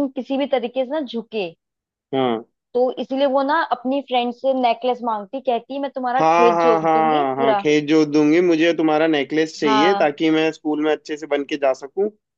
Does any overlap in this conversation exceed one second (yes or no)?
yes